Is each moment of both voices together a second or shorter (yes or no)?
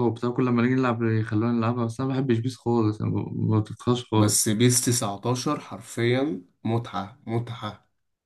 yes